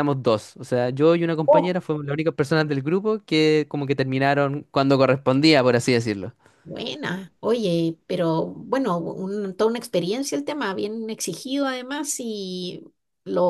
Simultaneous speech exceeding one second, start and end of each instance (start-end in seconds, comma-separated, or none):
none